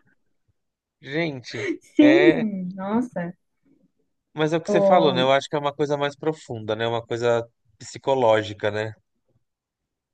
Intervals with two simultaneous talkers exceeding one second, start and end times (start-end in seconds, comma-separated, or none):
none